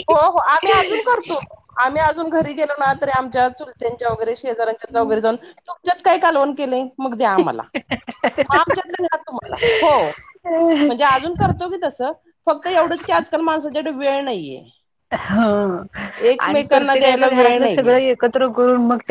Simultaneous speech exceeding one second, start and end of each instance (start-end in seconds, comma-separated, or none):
16.4-17.9